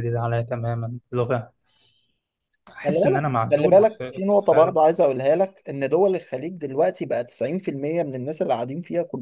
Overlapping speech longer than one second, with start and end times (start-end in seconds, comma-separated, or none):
2.8-4.8